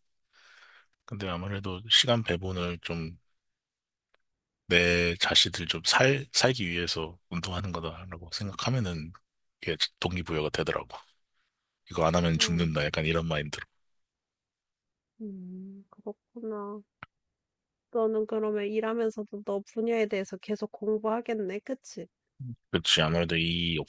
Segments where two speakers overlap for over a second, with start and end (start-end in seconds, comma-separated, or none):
none